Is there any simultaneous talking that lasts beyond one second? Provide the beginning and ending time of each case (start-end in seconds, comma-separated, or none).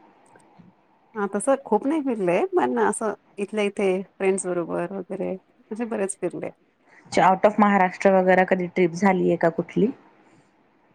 none